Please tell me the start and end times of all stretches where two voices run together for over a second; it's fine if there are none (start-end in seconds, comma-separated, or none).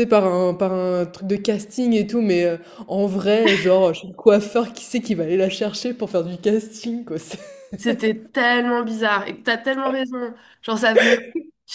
none